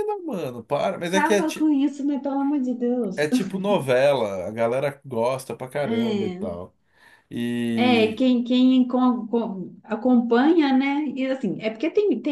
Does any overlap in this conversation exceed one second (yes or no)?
no